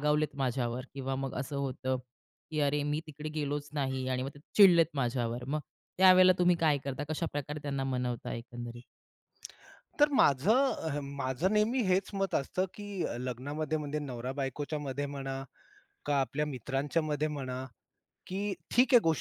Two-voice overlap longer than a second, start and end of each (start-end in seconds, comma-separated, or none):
none